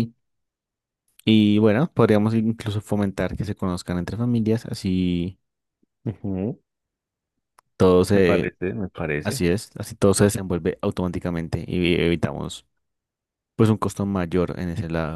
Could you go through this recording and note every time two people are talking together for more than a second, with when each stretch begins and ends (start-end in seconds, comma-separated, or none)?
none